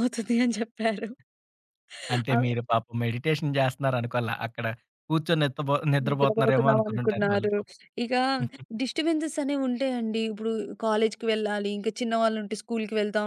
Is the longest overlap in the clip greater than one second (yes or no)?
yes